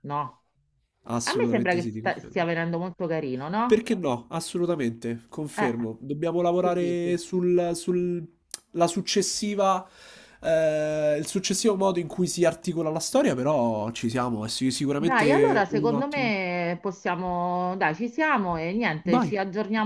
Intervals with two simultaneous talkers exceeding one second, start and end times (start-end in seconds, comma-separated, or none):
1.2-2.4, 14.9-16.4